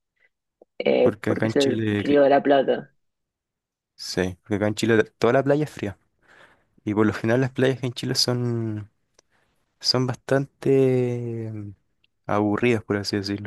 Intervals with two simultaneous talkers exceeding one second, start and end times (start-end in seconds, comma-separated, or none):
1.0-2.2